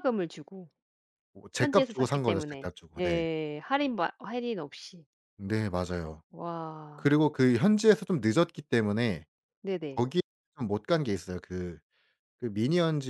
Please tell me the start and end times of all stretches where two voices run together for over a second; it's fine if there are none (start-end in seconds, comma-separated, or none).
1.6-3.2